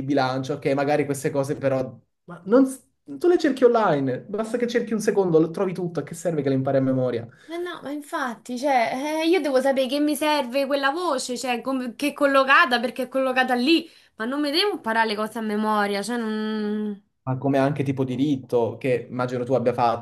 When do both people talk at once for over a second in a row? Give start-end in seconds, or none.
none